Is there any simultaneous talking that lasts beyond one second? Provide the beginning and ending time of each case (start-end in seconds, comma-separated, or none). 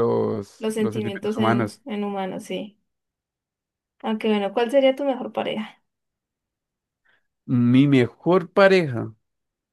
0.6-1.8